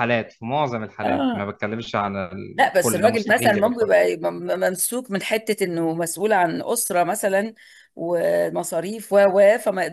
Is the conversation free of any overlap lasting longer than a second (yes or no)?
no